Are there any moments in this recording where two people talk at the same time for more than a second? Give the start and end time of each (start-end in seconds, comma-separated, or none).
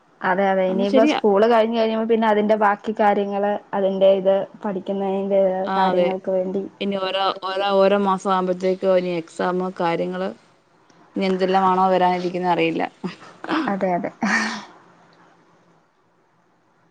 none